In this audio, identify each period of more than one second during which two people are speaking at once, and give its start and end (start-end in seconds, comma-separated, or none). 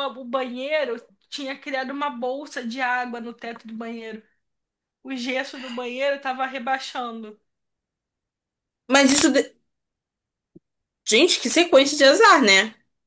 none